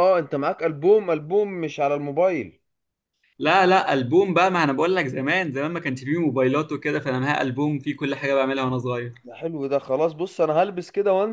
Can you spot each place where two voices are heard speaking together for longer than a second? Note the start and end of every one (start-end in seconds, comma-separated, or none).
none